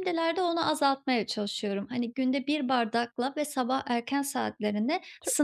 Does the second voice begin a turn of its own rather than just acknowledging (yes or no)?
no